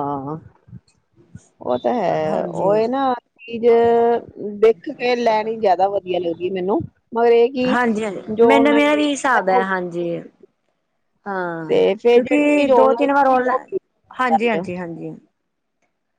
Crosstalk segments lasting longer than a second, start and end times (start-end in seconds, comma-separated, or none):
11.7-13.5